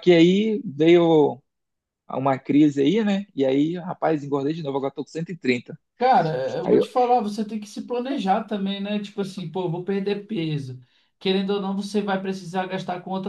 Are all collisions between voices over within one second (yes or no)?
yes